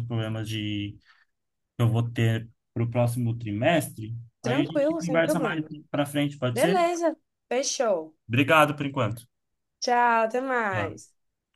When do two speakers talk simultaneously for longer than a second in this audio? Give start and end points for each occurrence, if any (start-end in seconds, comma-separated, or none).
4.4-5.7